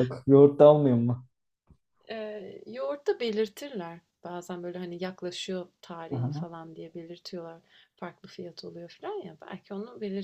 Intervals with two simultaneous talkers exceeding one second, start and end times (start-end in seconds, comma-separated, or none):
none